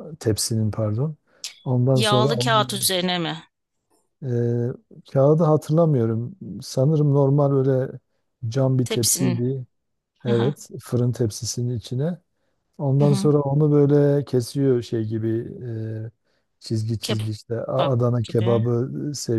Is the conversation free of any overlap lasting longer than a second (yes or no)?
no